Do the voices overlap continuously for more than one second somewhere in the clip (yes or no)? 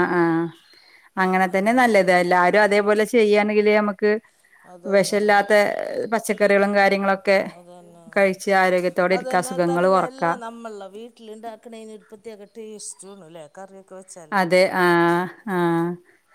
no